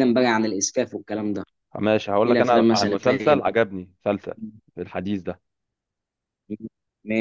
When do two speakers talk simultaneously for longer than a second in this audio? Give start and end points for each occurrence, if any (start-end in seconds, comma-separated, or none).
2.2-3.6